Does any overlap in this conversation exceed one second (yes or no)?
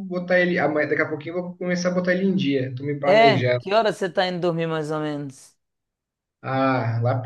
no